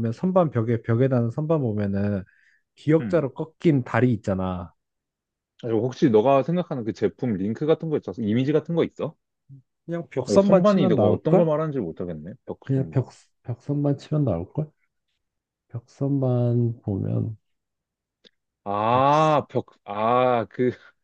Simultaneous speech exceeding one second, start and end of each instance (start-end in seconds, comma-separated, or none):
10.3-11.5